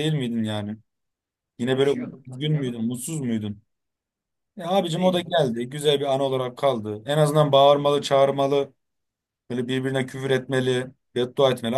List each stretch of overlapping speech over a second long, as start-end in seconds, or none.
1.6-3.0